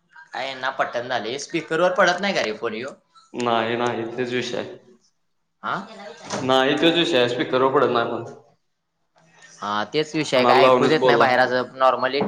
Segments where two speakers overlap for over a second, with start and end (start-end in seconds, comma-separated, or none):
10.2-11.5